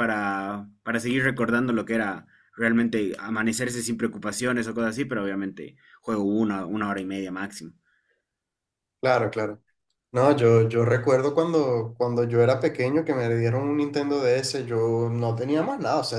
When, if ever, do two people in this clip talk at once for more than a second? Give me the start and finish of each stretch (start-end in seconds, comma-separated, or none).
none